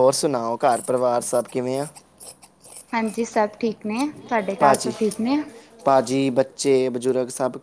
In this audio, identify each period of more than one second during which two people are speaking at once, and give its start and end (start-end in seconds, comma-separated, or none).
none